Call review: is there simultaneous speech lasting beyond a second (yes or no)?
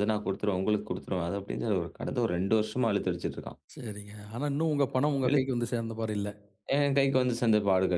no